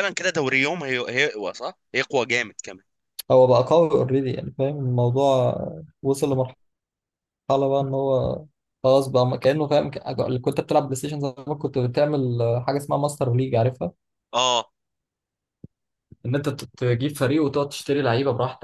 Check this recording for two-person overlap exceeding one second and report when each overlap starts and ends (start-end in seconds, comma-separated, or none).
none